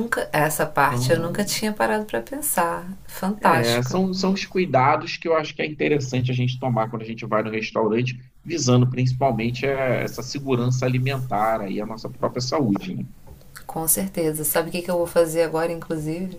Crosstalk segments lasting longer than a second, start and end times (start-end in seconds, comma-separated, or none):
none